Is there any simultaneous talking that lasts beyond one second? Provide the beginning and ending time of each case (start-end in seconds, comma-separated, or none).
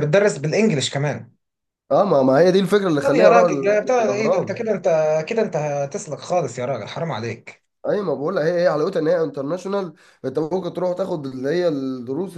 3.0-4.7